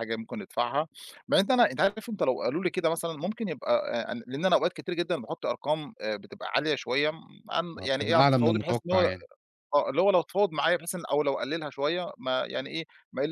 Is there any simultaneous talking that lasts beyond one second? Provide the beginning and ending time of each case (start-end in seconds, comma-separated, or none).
7.8-9.1